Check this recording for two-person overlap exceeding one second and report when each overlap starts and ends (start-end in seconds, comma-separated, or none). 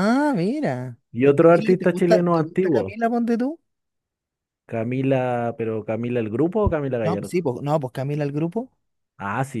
1.4-2.9